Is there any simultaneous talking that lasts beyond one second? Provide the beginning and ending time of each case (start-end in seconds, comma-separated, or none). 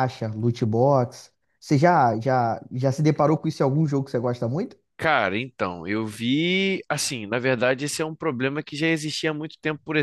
none